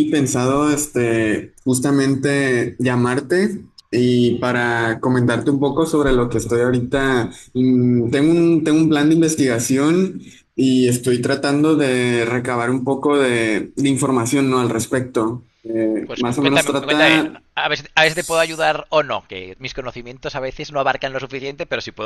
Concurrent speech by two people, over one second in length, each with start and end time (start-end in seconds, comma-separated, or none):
16.1-17.4